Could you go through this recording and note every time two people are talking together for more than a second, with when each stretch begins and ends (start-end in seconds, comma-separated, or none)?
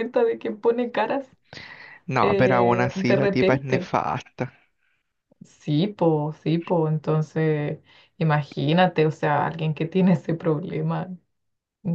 2.2-3.9